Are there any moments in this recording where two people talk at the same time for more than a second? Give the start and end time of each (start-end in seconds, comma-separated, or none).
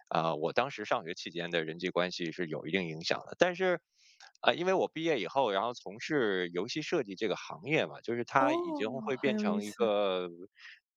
8.4-10.0